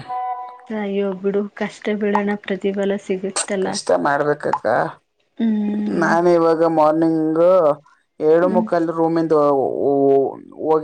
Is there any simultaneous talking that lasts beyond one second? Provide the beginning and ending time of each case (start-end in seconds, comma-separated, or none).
none